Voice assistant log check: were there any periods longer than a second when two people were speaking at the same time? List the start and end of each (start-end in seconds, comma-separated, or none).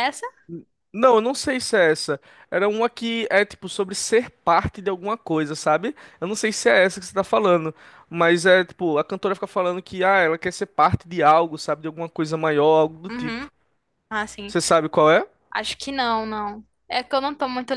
none